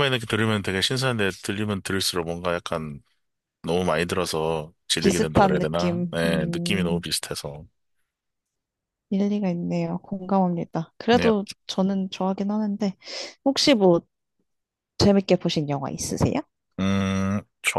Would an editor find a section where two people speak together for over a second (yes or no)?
yes